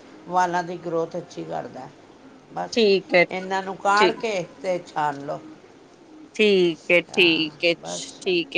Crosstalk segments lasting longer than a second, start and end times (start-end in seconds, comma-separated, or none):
none